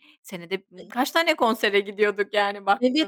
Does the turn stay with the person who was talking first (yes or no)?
no